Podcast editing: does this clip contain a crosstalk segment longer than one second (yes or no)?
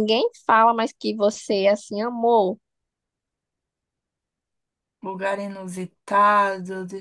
no